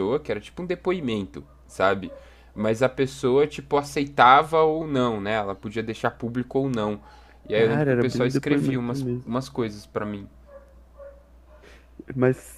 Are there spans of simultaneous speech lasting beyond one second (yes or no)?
yes